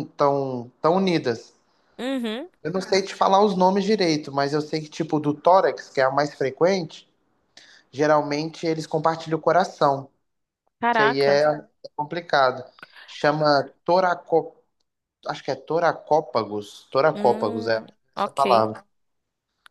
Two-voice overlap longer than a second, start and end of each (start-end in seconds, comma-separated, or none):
17.1-18.6